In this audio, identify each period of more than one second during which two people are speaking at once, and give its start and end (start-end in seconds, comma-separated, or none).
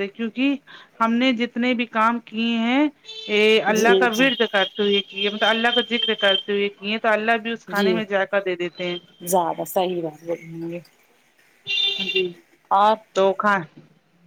none